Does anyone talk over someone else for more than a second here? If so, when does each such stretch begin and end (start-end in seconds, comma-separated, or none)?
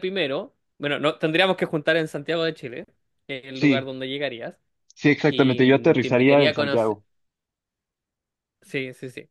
5.2-7.0